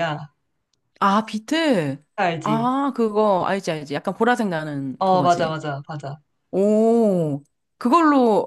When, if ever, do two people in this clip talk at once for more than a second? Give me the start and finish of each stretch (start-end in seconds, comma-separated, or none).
none